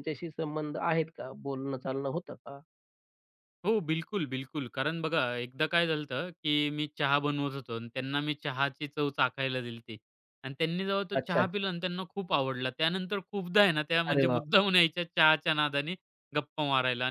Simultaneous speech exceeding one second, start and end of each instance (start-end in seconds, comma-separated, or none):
none